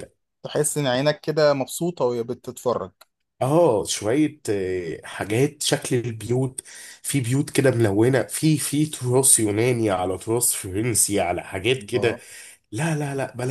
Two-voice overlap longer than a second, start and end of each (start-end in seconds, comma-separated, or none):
none